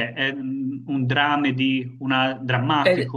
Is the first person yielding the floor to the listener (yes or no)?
yes